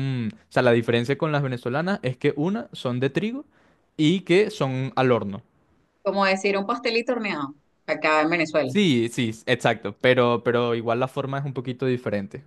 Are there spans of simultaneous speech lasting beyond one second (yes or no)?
no